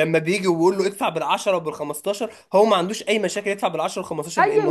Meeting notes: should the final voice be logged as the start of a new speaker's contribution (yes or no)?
yes